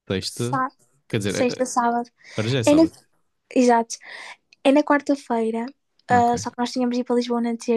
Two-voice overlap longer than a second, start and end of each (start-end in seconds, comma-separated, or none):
none